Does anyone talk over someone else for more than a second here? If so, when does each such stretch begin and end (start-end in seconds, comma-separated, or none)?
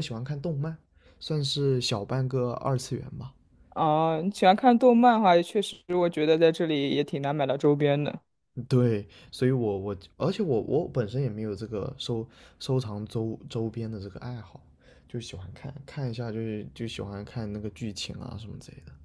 none